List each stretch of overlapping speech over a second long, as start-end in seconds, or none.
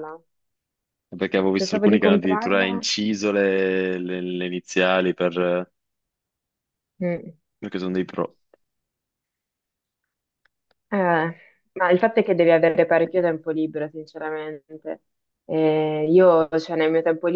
1.6-2.9